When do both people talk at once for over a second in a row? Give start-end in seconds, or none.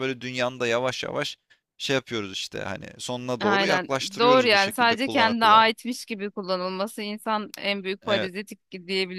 3.4-5.7